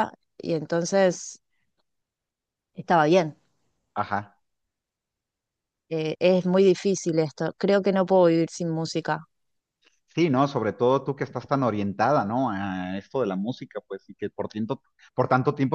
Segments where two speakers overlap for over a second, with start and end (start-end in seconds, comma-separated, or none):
none